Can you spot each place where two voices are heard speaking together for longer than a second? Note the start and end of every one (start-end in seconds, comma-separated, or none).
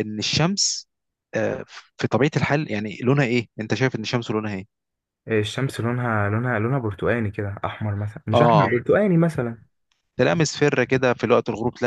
none